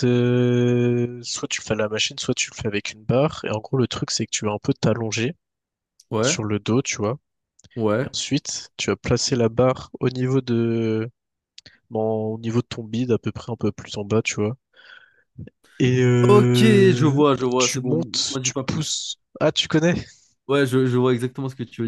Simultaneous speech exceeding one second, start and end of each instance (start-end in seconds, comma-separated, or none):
16.3-18.8